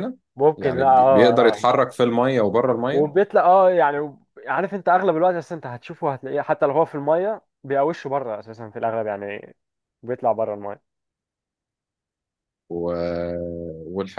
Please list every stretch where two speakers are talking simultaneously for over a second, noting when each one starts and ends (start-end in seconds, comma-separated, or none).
0.6-1.8